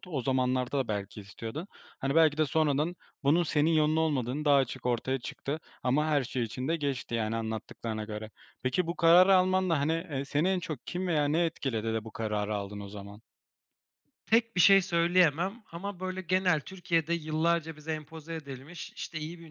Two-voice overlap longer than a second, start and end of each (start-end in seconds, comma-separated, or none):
none